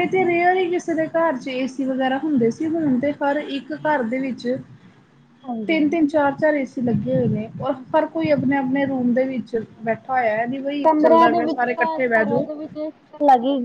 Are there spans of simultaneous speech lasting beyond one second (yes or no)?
yes